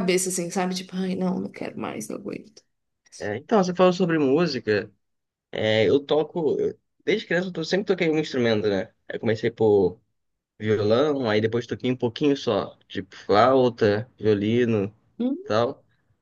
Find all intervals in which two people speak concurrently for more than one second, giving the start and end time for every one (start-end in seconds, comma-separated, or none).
none